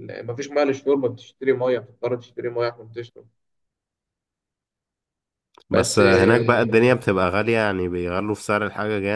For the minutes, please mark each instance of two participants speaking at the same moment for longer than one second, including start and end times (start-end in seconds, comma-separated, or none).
5.7-6.9